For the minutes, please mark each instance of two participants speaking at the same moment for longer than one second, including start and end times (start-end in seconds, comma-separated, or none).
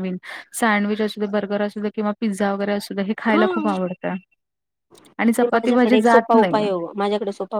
5.4-6.7